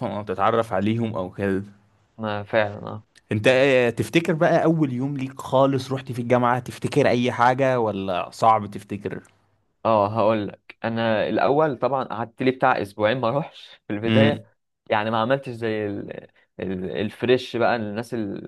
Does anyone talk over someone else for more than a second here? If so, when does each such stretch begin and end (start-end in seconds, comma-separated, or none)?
none